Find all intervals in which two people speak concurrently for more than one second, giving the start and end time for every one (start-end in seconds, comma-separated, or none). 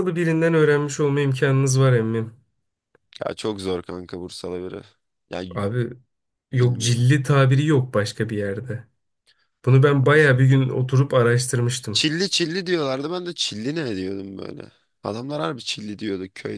none